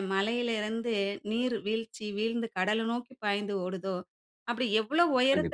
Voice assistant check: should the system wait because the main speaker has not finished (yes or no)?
yes